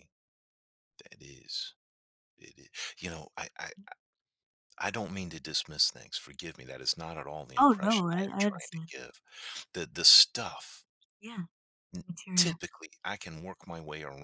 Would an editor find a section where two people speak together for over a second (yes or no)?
yes